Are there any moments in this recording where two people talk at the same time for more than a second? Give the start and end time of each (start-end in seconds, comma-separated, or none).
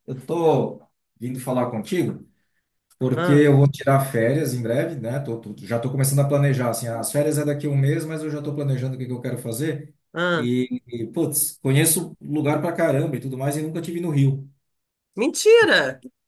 none